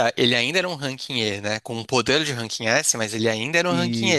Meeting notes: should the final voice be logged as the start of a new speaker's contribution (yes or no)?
no